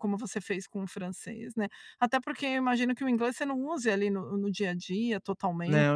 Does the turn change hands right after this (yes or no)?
yes